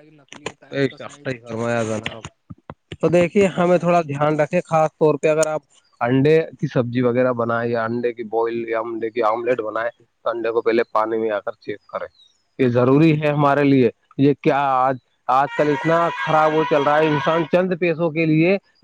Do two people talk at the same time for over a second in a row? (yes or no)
yes